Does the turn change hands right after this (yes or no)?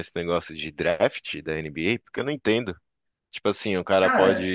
no